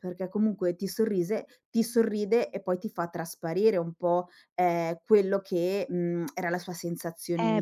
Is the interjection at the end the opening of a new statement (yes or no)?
yes